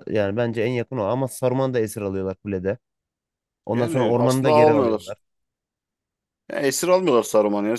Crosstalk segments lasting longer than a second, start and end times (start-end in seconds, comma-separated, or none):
3.7-5.1